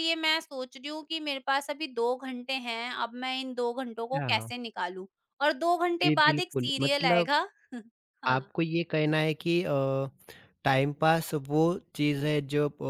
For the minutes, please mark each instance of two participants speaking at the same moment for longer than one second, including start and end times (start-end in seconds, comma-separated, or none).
6.0-7.3